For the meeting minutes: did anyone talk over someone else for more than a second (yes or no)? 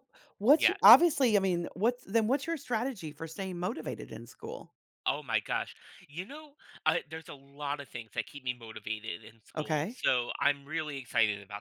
no